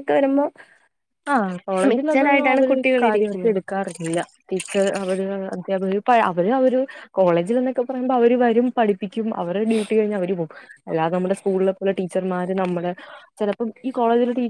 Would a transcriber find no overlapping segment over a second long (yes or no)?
no